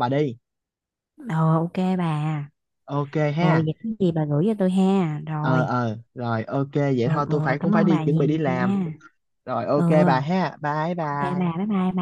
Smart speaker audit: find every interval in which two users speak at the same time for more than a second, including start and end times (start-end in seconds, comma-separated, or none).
7.0-8.8